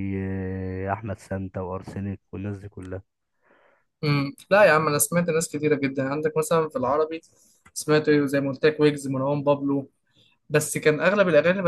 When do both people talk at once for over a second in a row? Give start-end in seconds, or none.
none